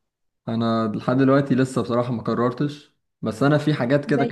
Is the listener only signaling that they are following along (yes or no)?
yes